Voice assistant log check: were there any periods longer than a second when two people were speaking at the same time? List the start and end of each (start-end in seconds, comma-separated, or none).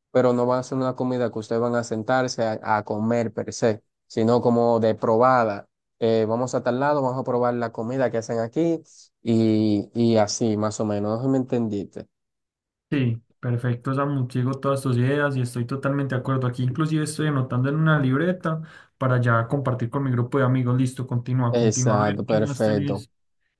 21.5-23.1